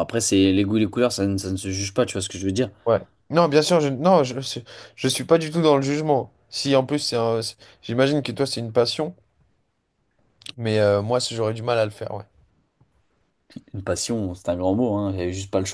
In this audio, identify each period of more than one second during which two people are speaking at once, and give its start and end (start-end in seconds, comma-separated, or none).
none